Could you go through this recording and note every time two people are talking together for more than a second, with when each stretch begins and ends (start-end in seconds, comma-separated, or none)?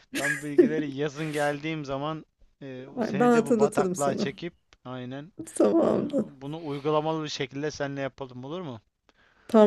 3.0-4.3